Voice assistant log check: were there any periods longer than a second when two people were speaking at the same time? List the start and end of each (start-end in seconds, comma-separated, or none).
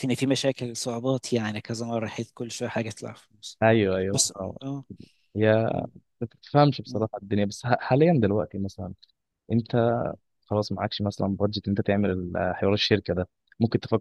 none